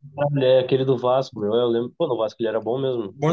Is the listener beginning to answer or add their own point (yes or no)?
yes